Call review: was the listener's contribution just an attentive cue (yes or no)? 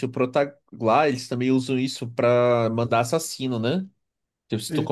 yes